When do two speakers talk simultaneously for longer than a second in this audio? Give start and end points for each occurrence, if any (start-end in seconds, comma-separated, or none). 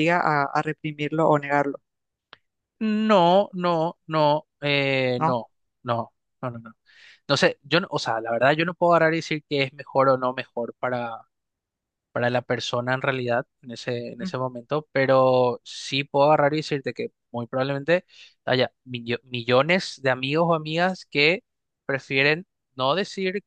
none